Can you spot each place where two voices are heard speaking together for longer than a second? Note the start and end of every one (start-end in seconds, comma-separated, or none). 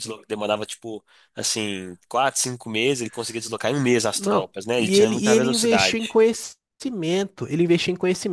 4.2-6.2